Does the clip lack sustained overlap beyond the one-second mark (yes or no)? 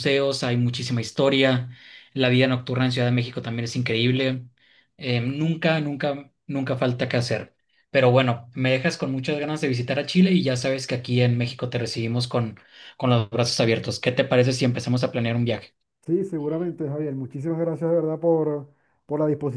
yes